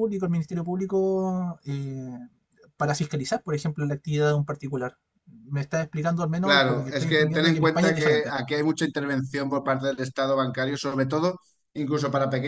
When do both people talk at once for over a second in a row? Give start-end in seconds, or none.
6.4-8.3